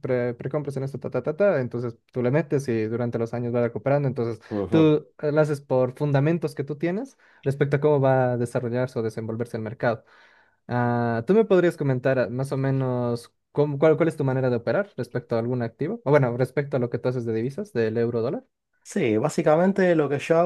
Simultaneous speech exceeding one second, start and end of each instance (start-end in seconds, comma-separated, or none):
none